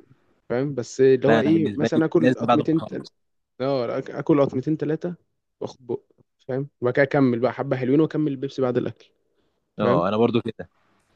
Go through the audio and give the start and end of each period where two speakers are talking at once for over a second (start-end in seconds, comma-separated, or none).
1.3-3.1